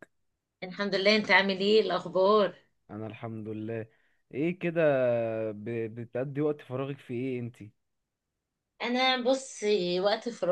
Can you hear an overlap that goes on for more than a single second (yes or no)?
no